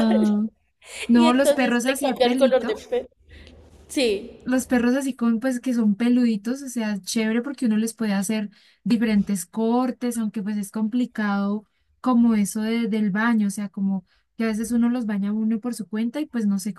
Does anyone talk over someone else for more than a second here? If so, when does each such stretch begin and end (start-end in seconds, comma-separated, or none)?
1.1-2.8